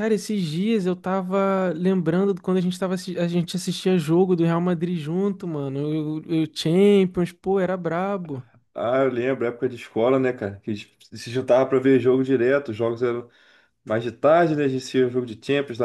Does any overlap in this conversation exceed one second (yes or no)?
no